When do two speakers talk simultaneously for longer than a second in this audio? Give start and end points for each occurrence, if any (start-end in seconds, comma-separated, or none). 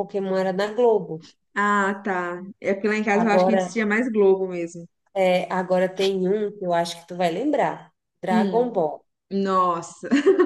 none